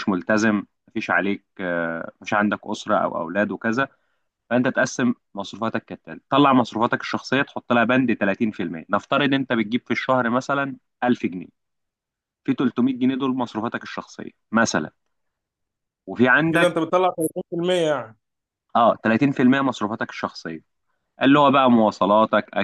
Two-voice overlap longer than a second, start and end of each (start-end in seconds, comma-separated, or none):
none